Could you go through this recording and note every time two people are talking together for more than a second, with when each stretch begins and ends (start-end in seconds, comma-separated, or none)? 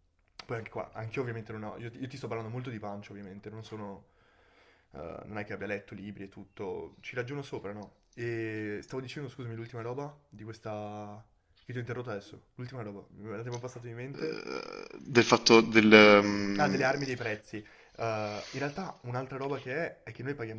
none